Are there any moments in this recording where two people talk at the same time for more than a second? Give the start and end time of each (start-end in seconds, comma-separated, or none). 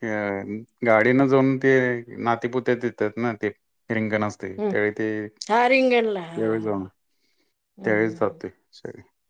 5.5-6.8